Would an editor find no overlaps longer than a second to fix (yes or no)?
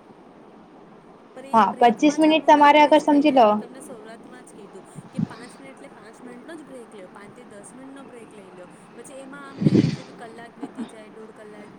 no